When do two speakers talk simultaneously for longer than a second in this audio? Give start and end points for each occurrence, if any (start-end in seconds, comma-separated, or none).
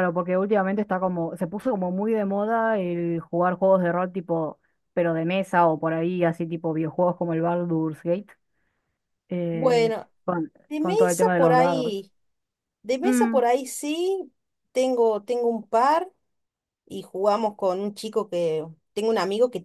10.7-11.9